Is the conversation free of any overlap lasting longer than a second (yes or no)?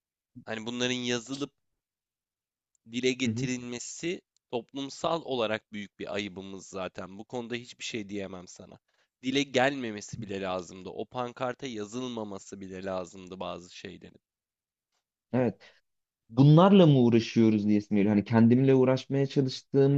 yes